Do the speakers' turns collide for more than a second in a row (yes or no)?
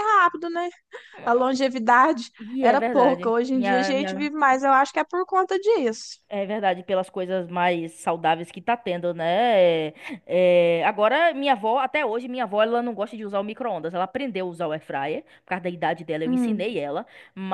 yes